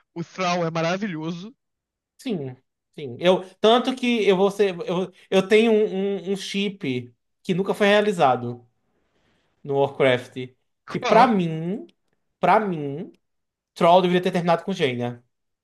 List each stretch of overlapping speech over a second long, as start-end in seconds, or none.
none